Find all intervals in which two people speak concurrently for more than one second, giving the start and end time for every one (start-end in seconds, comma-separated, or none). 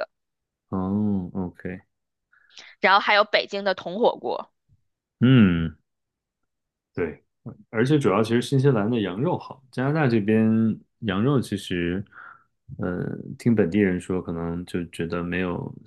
none